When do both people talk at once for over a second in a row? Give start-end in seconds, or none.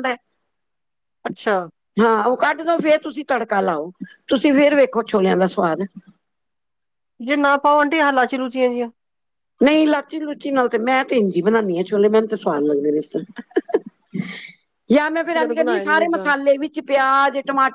15.1-16.3